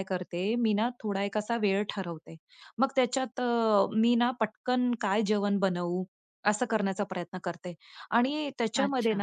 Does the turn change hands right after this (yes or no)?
no